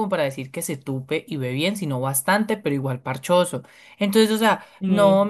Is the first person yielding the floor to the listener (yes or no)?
no